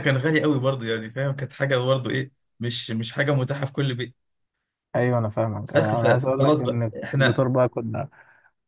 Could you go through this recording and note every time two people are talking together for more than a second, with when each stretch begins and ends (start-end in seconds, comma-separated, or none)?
5.7-7.5